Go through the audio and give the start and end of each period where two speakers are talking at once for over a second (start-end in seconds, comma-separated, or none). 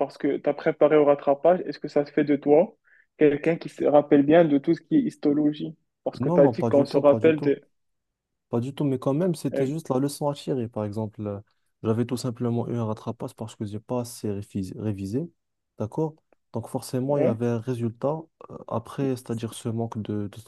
6.2-7.6